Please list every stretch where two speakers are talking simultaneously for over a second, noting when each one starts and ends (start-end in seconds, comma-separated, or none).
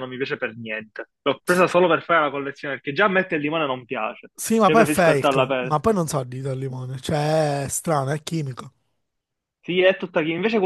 4.4-5.9